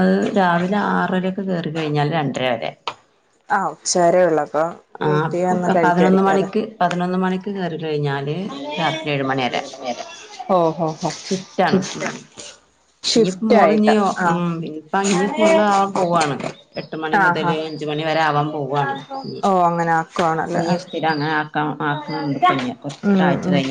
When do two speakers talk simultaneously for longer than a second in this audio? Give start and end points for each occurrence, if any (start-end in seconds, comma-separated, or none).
none